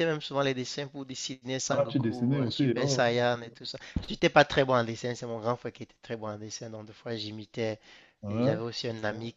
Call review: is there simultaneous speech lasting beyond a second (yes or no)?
yes